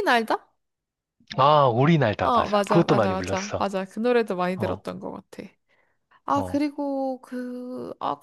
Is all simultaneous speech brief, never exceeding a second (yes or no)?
no